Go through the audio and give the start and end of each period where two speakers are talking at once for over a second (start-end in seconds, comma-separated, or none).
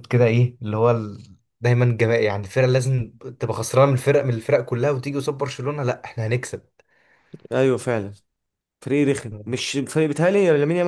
none